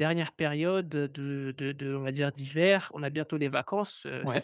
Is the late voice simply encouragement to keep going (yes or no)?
yes